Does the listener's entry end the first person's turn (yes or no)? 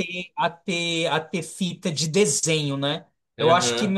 no